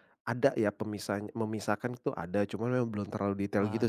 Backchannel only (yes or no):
yes